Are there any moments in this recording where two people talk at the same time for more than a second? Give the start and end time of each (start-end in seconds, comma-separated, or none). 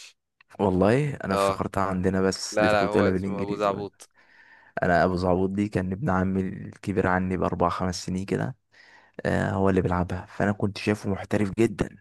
2.5-3.9